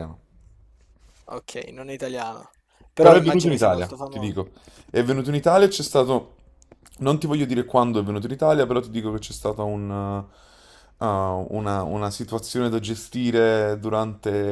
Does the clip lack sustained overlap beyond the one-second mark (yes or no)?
no